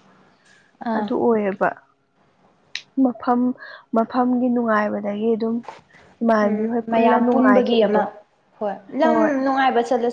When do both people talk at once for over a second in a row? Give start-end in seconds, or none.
6.4-8.0